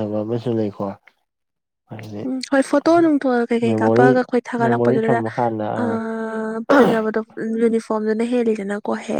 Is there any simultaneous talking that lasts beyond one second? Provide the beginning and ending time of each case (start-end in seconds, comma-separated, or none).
3.7-5.2